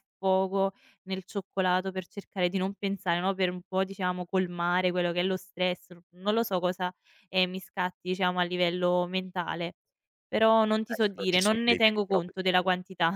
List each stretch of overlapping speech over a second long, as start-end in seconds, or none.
10.8-12.3